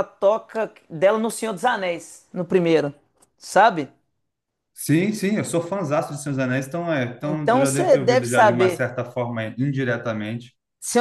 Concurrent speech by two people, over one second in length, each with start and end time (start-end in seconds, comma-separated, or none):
7.2-8.9